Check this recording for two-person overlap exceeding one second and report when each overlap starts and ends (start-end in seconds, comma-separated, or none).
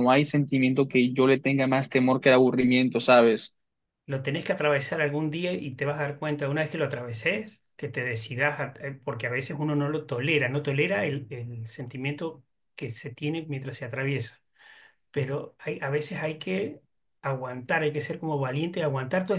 none